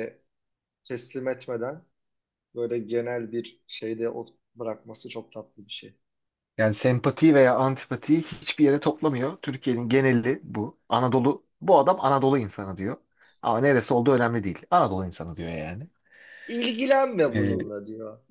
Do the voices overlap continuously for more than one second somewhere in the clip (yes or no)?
no